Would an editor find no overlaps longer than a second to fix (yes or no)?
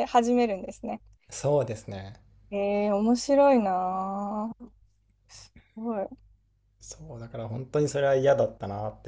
yes